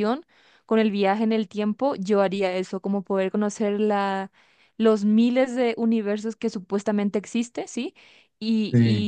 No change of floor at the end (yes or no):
yes